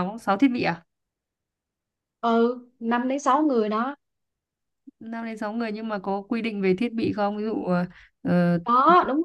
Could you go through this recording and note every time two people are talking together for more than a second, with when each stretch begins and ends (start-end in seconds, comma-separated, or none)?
none